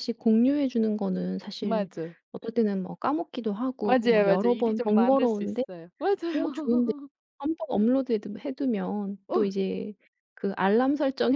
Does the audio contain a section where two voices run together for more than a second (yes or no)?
yes